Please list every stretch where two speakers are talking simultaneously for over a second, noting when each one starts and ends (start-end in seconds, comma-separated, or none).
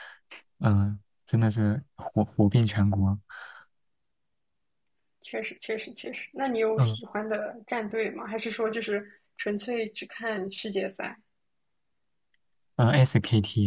none